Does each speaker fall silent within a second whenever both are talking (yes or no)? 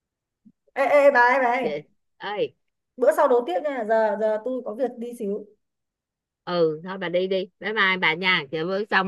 yes